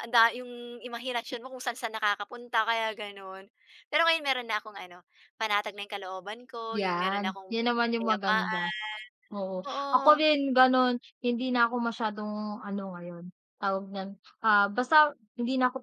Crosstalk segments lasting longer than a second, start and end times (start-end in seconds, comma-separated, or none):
6.7-8.7